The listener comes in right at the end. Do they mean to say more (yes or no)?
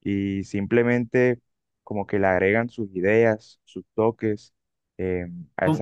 yes